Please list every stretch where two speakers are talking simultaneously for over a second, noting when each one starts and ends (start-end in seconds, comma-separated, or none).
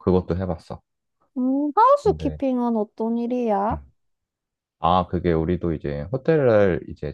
none